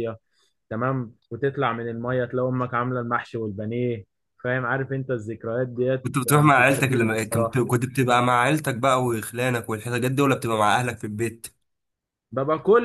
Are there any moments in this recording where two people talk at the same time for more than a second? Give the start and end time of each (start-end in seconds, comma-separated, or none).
6.0-7.6